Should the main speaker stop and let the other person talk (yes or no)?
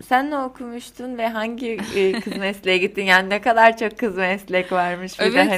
yes